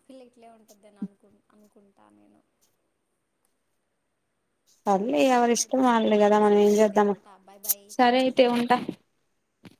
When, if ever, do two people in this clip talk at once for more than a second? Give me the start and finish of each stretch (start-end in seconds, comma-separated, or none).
5.2-7.1